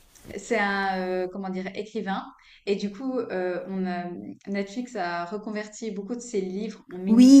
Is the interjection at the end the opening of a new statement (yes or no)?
yes